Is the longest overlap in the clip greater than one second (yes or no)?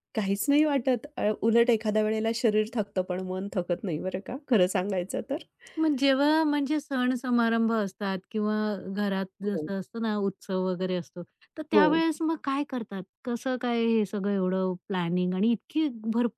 no